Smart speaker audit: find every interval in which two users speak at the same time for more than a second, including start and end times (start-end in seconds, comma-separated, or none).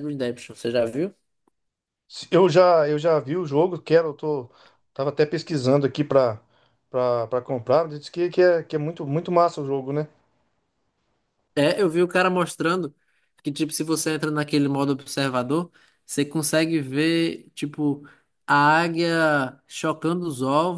none